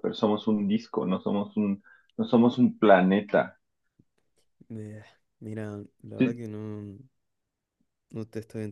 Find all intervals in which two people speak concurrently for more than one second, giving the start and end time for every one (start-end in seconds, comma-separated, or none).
none